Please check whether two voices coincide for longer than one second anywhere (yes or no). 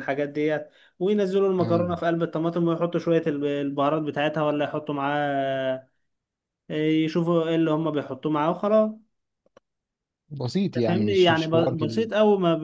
yes